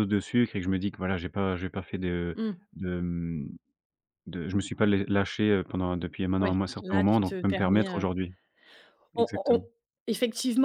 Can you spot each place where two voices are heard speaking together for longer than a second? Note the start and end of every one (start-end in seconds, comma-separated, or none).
6.4-8.0